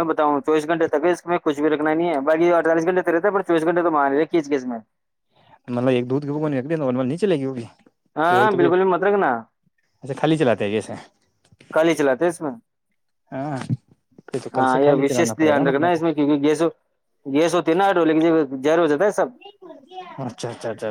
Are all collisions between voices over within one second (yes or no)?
no